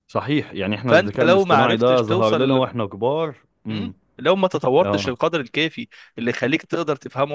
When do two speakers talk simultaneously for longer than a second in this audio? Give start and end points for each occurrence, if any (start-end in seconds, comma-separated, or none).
0.9-2.6